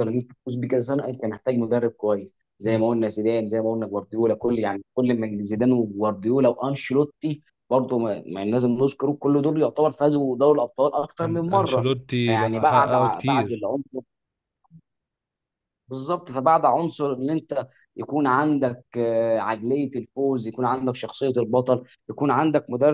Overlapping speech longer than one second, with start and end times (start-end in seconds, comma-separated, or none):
11.2-13.7